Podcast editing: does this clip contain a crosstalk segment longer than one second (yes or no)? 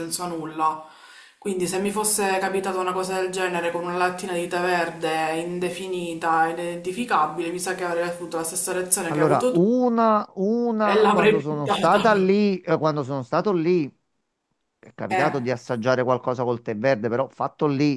yes